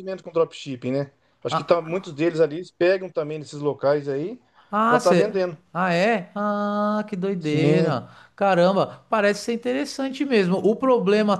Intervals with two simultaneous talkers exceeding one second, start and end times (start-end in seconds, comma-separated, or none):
none